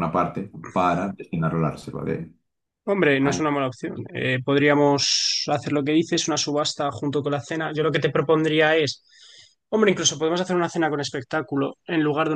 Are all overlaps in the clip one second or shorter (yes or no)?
yes